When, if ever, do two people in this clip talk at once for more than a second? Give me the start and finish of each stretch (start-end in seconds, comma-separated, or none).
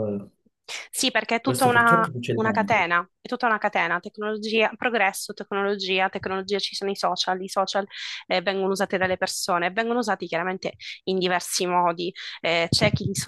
1.4-2.9